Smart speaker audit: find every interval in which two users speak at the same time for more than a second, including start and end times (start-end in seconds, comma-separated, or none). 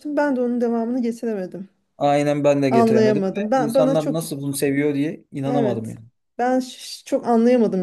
2.7-4.2